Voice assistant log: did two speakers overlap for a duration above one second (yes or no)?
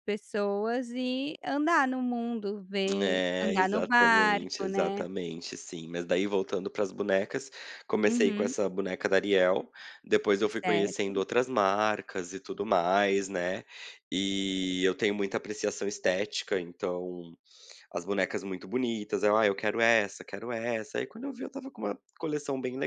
yes